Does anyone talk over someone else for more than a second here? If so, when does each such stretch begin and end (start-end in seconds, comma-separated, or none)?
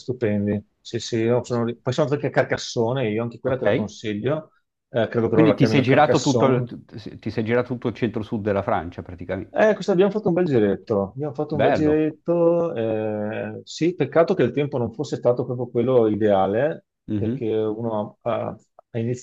5.3-6.7